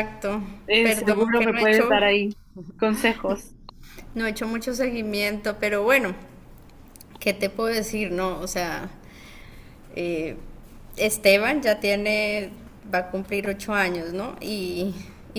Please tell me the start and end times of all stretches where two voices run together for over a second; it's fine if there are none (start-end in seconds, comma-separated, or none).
0.8-2.0